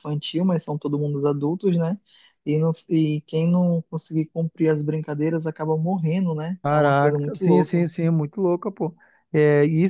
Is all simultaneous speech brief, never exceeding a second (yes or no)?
no